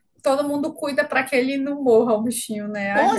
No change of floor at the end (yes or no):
no